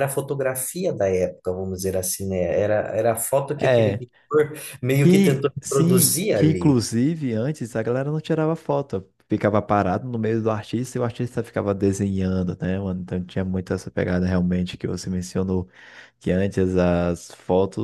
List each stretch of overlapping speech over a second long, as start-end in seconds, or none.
5.0-6.8